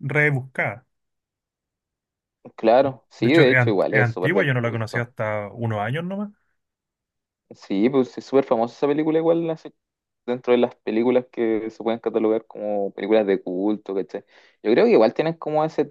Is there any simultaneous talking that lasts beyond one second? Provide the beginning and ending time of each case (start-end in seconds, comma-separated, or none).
3.2-5.1